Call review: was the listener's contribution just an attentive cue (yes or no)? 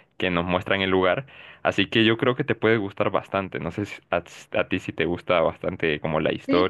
no